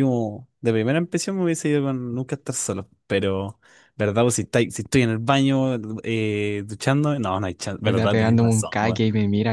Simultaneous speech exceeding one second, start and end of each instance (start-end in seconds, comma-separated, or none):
7.8-9.0